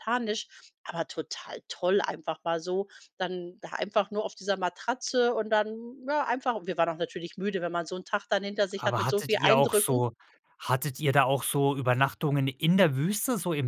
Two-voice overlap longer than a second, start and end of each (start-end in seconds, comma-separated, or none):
8.8-10.0